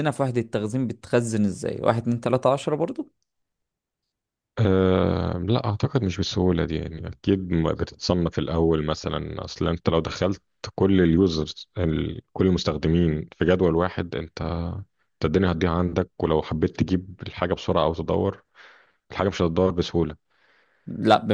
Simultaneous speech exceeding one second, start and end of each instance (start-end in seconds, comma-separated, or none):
none